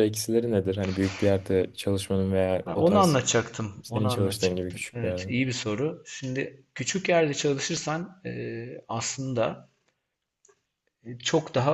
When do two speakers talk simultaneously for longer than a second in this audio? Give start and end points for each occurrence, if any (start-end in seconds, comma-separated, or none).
3.8-5.3